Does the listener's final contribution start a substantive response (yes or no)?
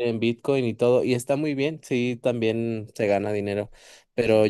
no